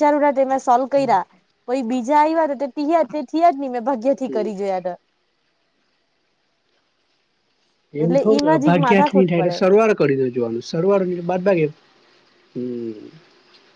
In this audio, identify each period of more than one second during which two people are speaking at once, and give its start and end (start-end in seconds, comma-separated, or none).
8.0-9.6